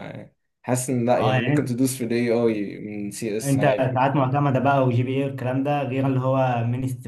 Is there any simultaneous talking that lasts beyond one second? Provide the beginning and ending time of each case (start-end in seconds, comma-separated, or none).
none